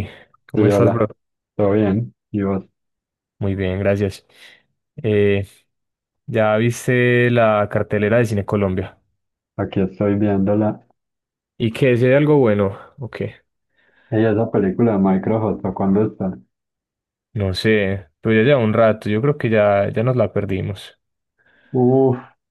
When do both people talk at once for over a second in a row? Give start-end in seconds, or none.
none